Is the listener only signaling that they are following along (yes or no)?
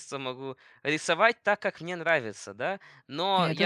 yes